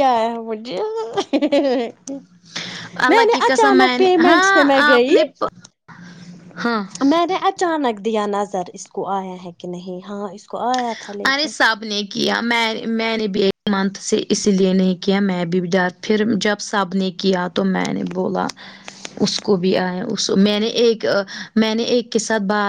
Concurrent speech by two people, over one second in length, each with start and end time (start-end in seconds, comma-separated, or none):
3.1-5.1